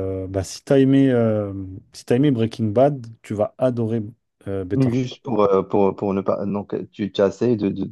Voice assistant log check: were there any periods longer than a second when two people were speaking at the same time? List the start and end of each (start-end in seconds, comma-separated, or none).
none